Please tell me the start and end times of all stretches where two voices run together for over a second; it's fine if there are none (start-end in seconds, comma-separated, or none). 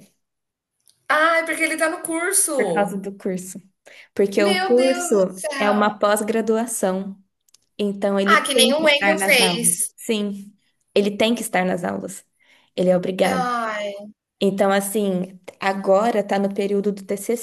4.4-5.9, 8.2-9.9